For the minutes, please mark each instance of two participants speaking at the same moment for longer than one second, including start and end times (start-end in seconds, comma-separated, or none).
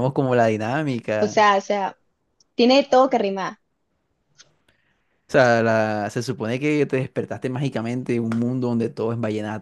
none